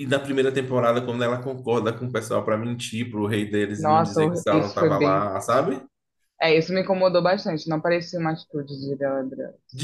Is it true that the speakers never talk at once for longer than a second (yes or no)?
no